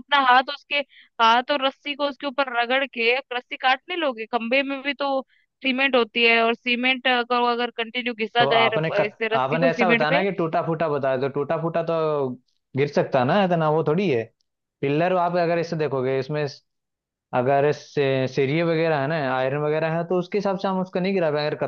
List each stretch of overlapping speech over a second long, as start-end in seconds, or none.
8.4-10.2